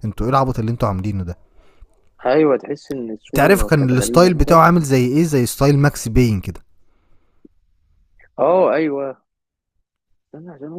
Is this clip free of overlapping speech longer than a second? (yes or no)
no